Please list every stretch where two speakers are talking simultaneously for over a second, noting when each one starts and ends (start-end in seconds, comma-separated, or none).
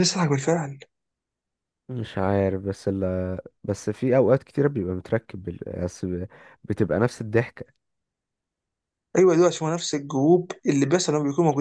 none